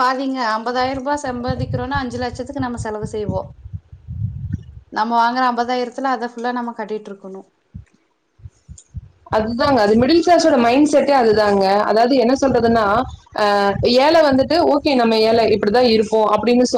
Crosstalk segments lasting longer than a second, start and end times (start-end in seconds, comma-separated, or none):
none